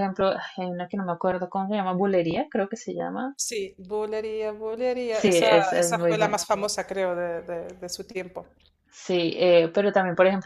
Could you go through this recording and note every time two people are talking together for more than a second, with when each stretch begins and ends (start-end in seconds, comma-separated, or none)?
5.1-6.4